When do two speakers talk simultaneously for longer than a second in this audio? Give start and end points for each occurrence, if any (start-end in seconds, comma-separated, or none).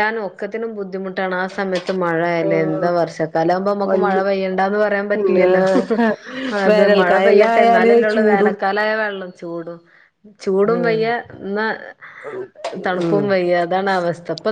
6.7-8.5